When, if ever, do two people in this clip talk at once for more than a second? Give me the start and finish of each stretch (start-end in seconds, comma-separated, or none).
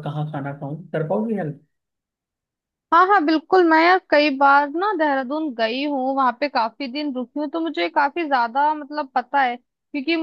none